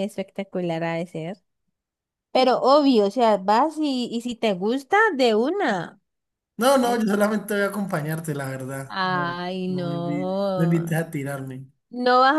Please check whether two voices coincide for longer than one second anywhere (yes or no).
yes